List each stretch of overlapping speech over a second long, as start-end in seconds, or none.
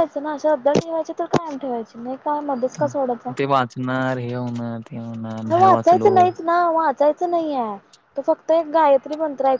none